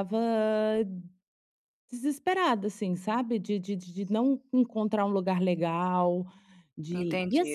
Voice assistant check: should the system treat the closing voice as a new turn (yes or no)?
yes